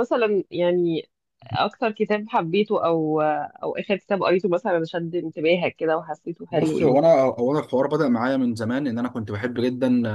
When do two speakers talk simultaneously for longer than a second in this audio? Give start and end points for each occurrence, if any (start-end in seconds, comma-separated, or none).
none